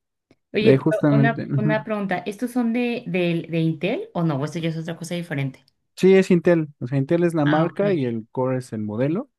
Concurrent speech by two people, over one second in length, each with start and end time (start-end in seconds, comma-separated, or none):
0.6-1.8